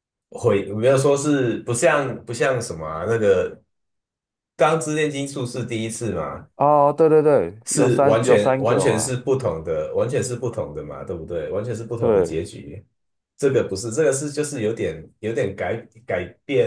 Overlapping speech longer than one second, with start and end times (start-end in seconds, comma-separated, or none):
7.7-9.1